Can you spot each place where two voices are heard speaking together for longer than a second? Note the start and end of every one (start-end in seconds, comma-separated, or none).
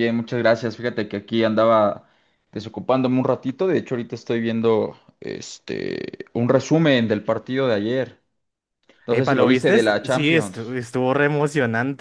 9.1-10.7